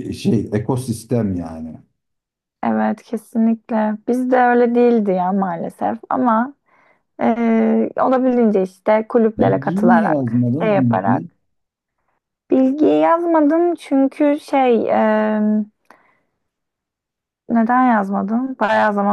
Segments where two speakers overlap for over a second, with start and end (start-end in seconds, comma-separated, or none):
9.4-11.2